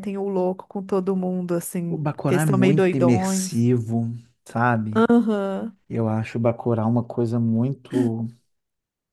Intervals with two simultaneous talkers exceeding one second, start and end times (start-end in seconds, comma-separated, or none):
1.9-3.6